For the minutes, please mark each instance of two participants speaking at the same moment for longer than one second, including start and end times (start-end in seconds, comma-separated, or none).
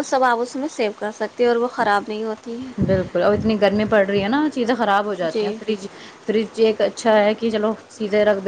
none